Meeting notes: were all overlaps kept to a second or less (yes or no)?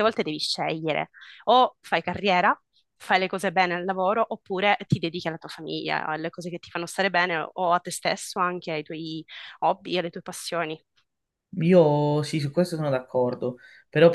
yes